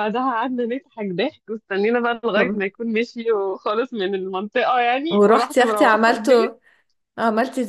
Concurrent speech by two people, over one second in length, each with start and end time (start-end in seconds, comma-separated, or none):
5.1-6.6